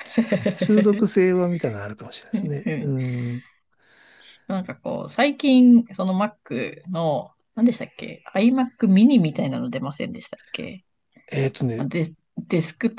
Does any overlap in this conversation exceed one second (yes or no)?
no